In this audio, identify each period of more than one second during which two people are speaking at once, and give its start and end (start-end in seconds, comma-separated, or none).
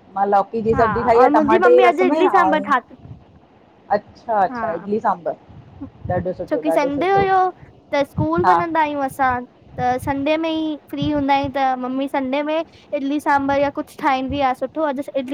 0.7-2.7